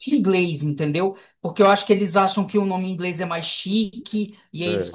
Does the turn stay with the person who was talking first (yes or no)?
yes